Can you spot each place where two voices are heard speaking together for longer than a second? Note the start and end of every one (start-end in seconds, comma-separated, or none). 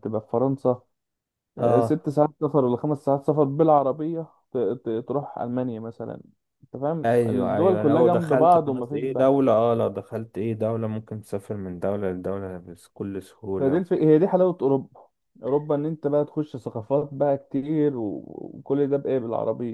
7.0-9.4